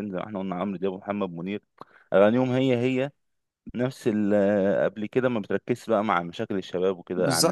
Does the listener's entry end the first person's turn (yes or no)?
yes